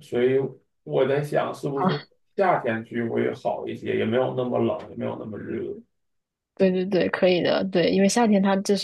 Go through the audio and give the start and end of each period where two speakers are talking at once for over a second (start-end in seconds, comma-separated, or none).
none